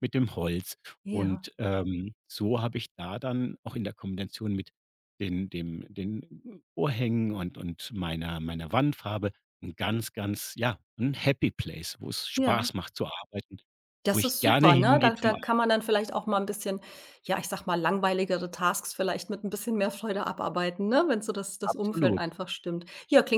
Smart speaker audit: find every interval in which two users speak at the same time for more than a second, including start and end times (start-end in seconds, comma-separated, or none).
14.1-15.5